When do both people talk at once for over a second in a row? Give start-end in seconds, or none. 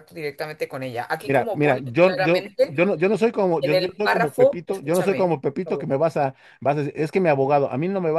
1.3-2.8, 3.6-5.9